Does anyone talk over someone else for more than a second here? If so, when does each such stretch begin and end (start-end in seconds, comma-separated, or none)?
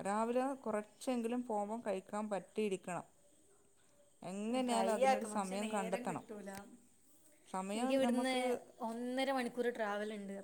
4.7-6.2